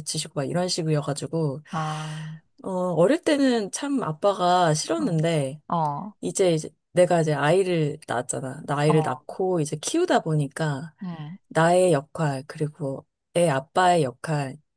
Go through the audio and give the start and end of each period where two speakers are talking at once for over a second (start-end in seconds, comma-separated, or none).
none